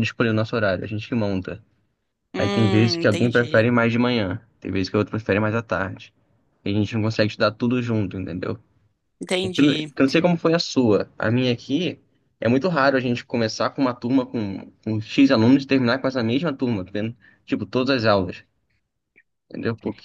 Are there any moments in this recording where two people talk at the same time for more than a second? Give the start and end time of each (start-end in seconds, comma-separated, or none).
2.4-3.7